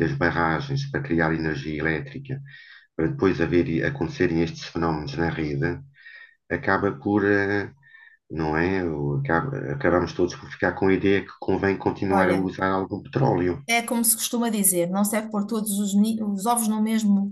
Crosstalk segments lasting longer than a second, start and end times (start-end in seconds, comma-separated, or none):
none